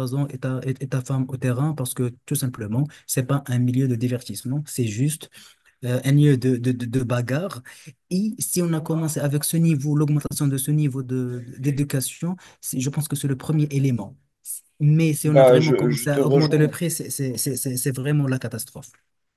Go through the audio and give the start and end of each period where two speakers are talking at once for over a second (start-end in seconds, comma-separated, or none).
15.2-16.8